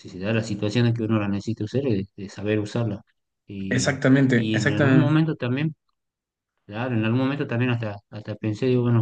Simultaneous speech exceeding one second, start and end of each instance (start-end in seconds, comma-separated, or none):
3.7-5.2